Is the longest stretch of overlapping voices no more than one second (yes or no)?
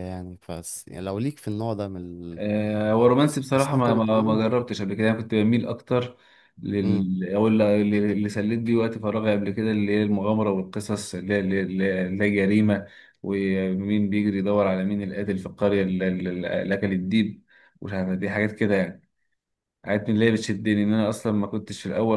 no